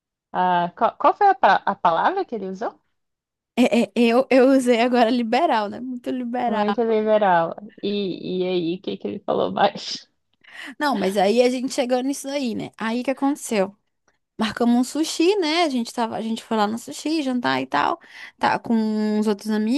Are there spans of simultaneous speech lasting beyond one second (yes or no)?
no